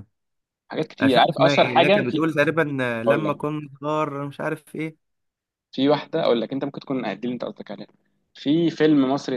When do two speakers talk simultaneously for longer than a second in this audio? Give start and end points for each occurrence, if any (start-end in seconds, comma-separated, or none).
1.0-2.3